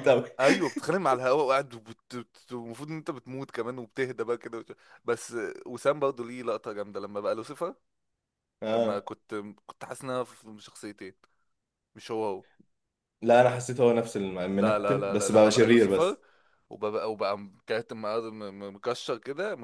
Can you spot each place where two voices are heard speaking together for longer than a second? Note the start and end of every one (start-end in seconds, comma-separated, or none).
14.5-16.2